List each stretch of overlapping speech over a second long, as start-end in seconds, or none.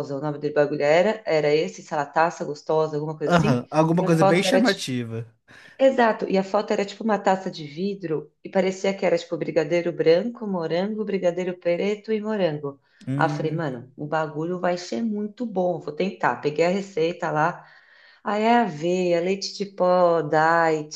3.3-4.8